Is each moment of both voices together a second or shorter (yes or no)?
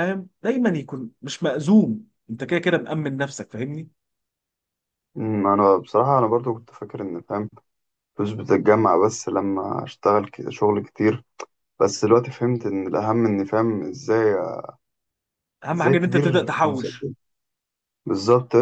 no